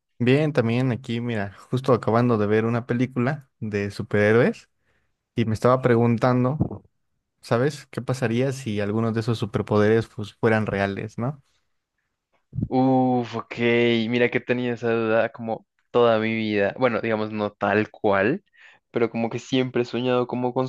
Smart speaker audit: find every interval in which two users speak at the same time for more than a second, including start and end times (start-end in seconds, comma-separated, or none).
none